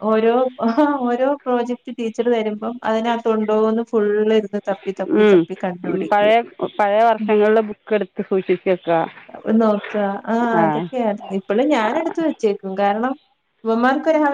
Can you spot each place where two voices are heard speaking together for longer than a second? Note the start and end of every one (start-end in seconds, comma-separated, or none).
none